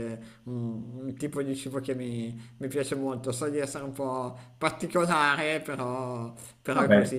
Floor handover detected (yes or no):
no